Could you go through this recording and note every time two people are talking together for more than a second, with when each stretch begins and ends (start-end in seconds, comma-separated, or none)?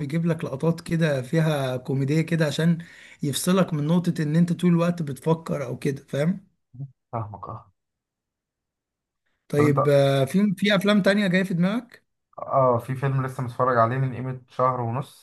none